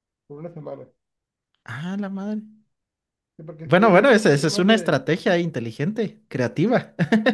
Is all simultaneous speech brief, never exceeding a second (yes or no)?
no